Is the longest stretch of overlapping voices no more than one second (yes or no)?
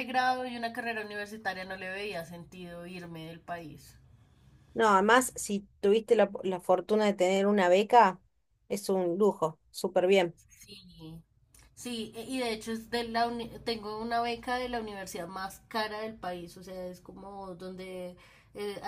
yes